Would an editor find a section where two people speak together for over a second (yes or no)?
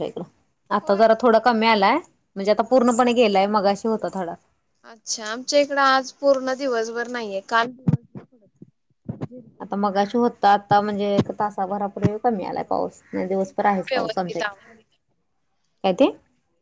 yes